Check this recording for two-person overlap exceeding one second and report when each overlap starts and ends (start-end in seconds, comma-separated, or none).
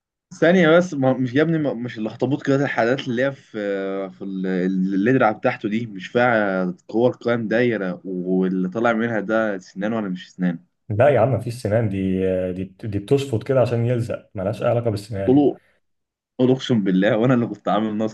none